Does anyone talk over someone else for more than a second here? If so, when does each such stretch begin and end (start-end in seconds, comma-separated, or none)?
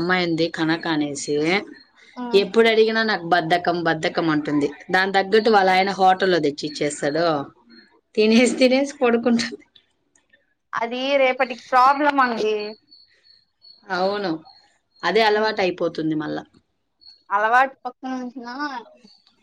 none